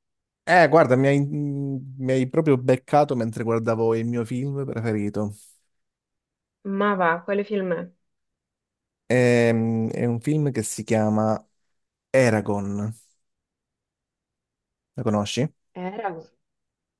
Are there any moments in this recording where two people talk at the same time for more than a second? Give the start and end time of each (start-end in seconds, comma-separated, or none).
none